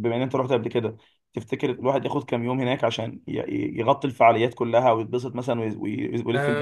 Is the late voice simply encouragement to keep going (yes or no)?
no